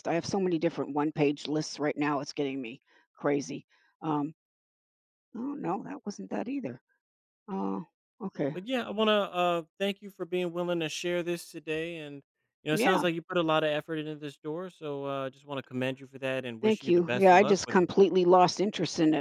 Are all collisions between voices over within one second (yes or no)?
no